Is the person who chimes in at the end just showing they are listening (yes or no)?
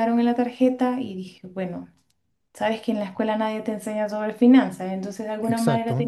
yes